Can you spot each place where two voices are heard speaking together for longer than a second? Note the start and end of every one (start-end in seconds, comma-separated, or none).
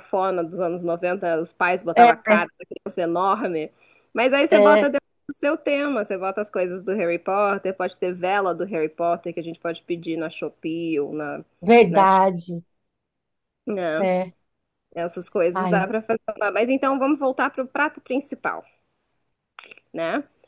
none